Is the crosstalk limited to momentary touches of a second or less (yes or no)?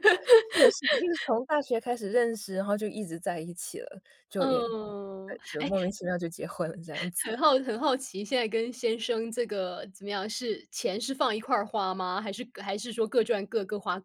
no